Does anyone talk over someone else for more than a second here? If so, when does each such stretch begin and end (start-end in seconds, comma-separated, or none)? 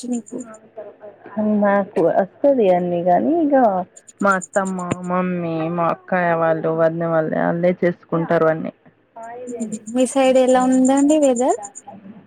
none